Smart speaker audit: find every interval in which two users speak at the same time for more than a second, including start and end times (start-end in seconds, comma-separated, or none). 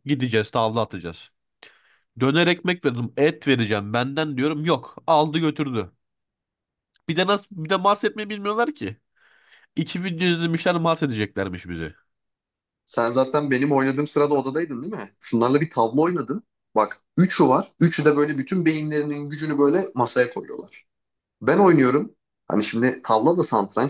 none